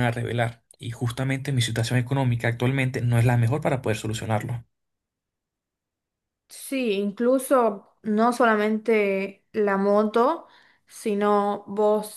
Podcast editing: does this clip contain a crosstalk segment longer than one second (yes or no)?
no